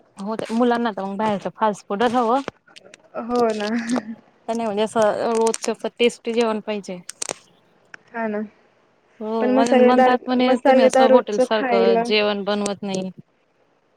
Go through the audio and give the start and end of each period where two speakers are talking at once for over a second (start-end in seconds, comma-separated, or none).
9.4-12.0